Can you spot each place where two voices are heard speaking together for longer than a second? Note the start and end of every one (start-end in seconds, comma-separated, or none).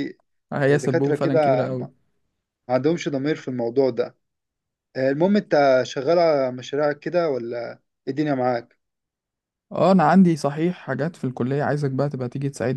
0.7-1.9